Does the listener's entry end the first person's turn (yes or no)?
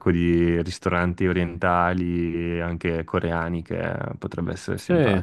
yes